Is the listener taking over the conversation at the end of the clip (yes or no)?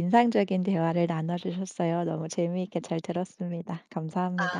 yes